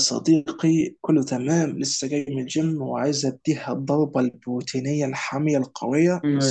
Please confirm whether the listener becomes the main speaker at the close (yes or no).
yes